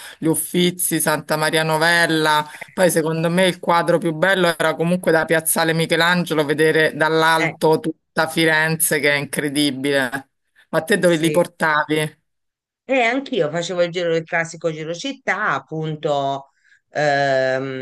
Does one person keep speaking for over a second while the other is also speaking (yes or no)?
no